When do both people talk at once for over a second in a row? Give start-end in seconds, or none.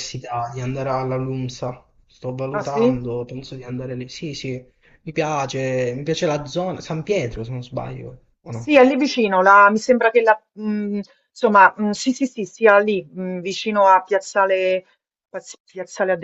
none